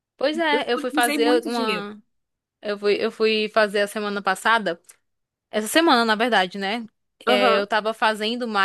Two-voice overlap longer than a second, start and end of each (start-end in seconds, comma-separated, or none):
0.5-1.9